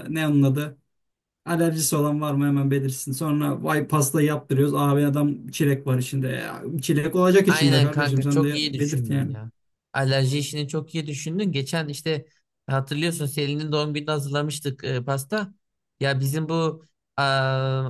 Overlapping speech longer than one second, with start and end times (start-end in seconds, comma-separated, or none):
7.5-9.3